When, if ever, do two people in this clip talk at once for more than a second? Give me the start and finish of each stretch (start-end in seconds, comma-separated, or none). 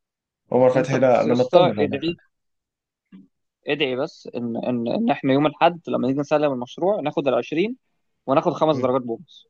0.8-2.2